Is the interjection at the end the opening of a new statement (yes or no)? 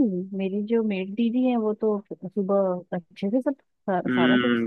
yes